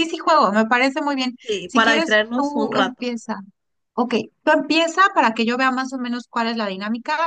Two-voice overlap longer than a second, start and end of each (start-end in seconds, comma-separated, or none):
1.4-3.1